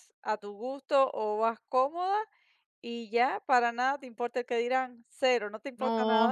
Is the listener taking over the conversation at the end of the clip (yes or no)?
yes